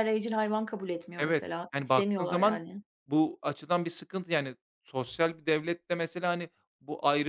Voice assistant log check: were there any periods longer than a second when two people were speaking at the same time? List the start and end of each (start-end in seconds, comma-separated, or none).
1.2-2.6